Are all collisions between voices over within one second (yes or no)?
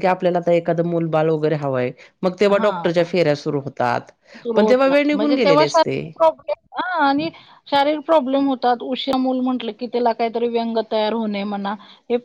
no